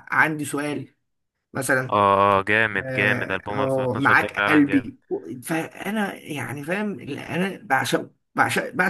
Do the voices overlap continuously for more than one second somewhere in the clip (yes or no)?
yes